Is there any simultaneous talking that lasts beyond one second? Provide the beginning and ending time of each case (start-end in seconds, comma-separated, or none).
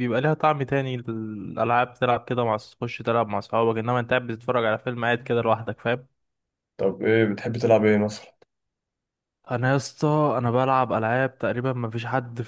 none